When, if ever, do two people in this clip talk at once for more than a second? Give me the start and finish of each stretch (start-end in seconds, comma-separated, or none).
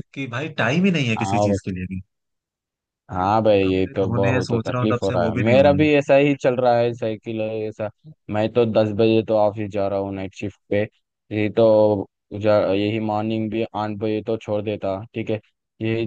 3.6-5.9